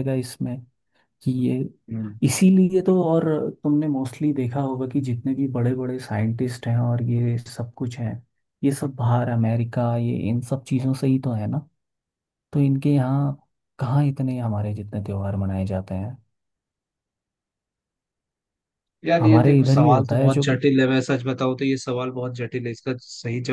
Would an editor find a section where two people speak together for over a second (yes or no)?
yes